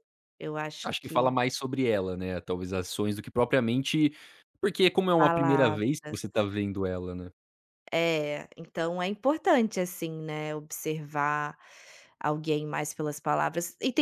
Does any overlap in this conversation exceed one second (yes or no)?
yes